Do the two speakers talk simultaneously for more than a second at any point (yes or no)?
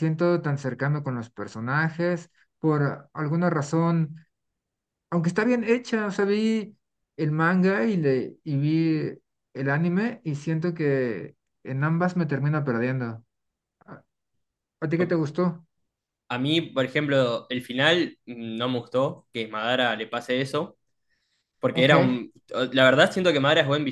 no